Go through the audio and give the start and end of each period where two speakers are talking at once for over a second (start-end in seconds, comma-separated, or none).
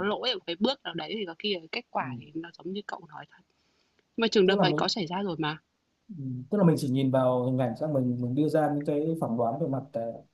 none